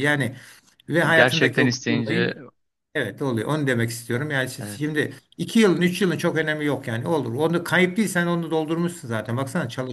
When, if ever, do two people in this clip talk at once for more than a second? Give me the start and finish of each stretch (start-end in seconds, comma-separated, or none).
1.1-2.3